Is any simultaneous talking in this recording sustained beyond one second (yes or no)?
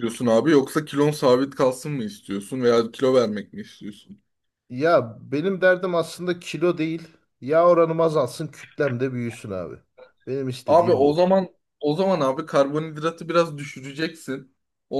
no